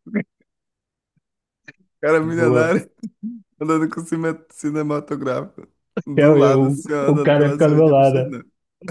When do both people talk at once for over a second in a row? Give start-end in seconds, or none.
6.0-8.3